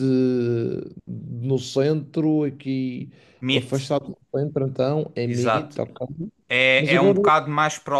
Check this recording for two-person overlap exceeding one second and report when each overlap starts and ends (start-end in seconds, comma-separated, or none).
none